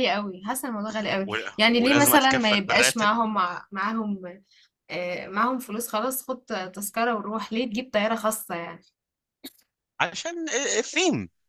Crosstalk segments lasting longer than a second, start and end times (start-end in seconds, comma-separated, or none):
1.3-3.1